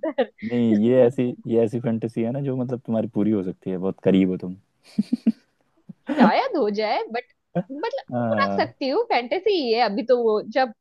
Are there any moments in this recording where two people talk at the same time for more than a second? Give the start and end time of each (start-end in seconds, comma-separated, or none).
none